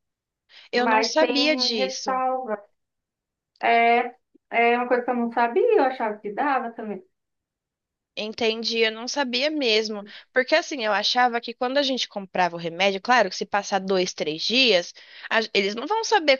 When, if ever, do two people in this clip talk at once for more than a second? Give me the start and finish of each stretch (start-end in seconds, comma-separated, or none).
0.7-2.2